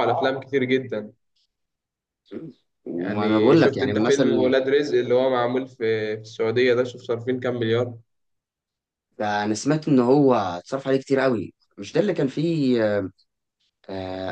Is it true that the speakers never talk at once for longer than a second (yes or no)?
no